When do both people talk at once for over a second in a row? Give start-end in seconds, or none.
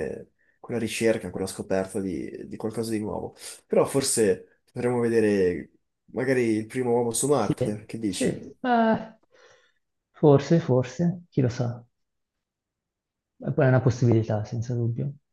none